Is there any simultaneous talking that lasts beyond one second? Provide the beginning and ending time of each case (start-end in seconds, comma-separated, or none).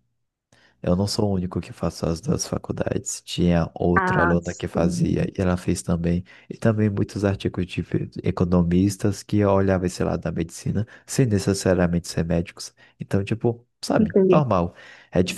4.0-5.3